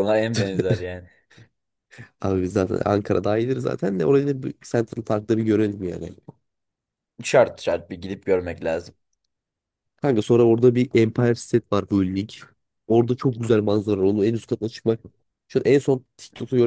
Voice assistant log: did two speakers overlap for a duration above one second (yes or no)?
no